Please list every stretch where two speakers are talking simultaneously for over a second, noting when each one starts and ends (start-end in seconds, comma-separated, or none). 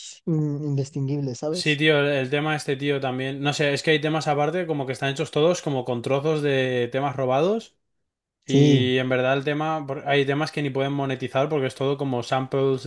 none